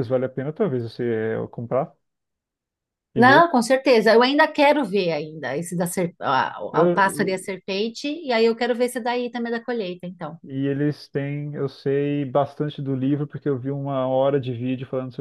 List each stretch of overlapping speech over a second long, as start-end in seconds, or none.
none